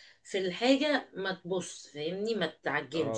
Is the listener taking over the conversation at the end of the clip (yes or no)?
yes